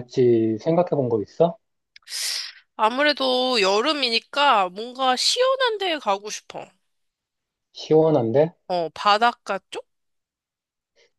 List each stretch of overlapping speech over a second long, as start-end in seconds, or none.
none